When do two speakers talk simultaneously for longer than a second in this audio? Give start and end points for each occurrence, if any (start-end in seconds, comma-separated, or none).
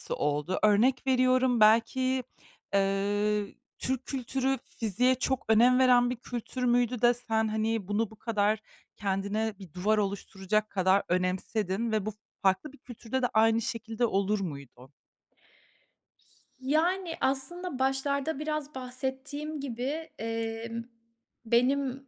none